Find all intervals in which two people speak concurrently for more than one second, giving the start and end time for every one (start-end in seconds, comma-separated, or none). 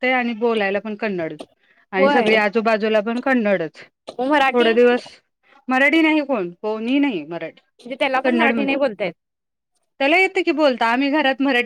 none